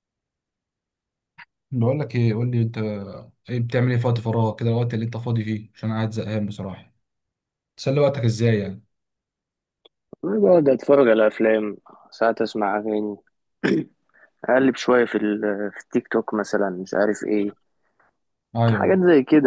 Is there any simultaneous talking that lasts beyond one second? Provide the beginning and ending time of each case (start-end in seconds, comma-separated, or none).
none